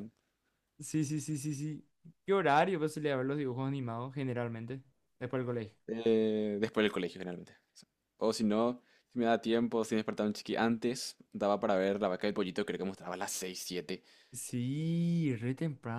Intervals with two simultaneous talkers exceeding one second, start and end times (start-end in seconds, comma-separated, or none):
none